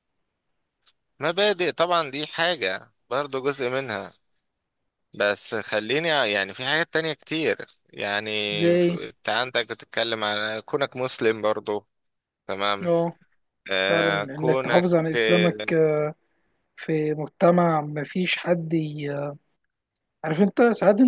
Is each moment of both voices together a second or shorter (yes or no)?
no